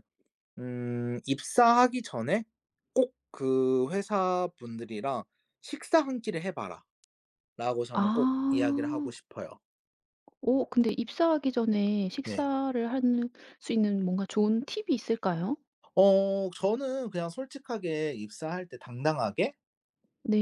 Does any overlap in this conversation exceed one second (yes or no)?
yes